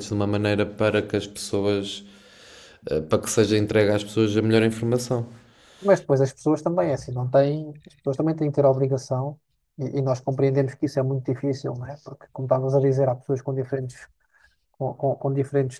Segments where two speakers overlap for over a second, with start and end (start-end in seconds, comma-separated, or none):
none